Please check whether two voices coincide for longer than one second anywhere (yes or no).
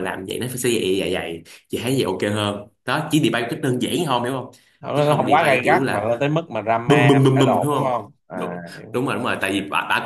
yes